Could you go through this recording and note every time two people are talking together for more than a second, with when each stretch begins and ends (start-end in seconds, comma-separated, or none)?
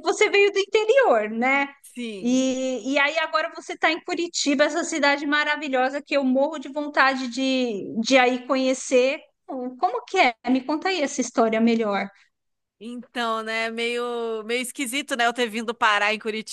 none